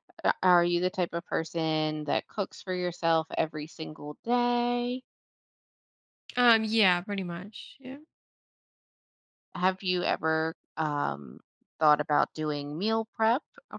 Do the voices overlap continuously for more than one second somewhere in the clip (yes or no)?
no